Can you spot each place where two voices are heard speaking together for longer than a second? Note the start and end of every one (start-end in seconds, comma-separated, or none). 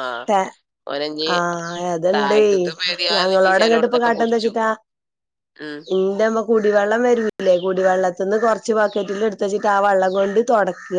3.1-4.5